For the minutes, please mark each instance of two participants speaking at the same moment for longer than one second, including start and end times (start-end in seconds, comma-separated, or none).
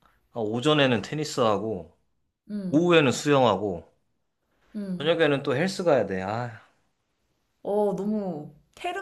none